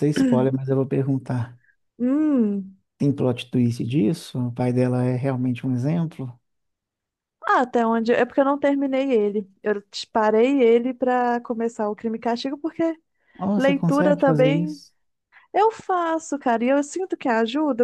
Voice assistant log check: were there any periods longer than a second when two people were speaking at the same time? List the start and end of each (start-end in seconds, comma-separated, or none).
13.6-14.8